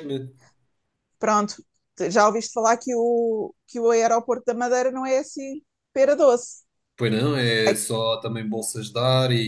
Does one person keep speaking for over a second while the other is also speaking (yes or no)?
no